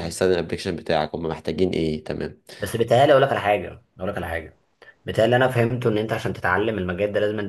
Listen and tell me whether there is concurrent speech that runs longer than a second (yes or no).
no